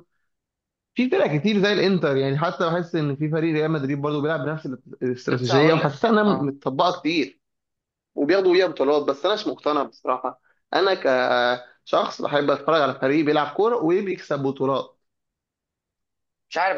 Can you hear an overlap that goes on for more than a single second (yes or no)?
yes